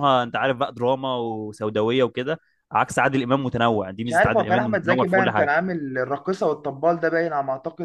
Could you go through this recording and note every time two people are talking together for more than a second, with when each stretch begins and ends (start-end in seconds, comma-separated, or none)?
4.0-5.5